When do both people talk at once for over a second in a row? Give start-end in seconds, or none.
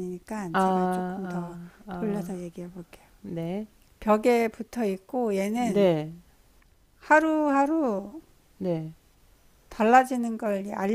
0.5-2.4